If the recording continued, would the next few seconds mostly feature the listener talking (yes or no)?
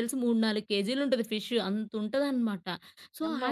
no